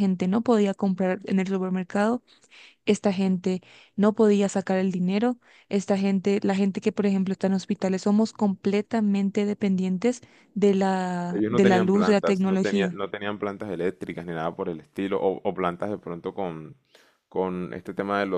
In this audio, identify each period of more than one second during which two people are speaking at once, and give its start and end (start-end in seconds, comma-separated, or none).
11.3-13.0